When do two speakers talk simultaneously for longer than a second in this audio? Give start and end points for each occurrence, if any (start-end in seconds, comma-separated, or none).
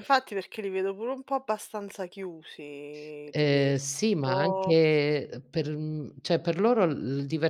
3.3-4.8